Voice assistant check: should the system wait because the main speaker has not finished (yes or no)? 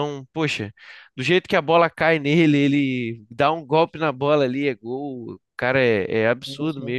no